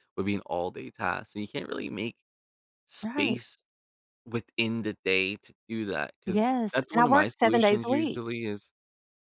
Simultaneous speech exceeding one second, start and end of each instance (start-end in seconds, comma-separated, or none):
6.3-8.2